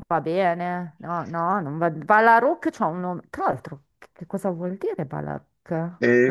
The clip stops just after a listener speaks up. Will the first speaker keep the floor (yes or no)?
no